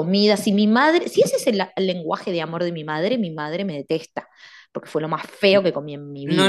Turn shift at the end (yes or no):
yes